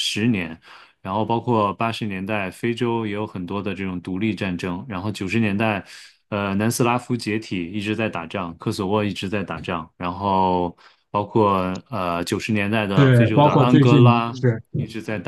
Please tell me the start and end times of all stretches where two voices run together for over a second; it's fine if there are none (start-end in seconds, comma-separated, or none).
12.9-14.3